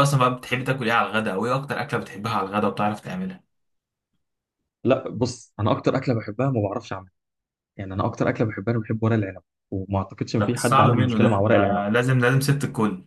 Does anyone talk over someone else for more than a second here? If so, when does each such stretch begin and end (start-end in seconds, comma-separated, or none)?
10.4-11.8